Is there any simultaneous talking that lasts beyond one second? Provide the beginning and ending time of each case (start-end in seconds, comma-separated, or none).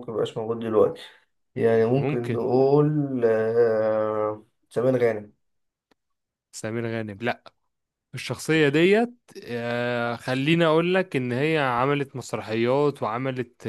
none